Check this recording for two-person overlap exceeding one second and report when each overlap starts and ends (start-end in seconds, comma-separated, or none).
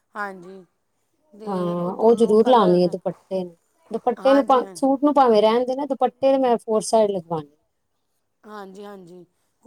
1.5-2.8